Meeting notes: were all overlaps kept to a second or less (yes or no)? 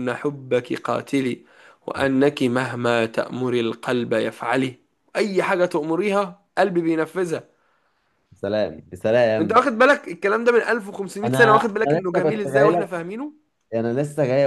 no